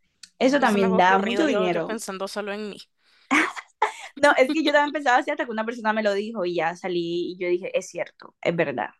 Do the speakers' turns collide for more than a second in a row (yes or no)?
yes